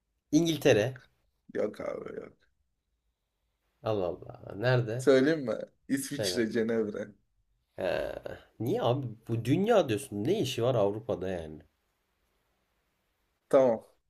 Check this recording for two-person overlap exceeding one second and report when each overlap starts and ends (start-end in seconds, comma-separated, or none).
none